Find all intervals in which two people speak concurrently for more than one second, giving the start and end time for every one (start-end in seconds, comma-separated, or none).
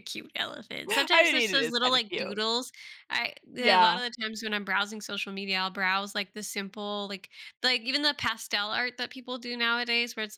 1.1-2.4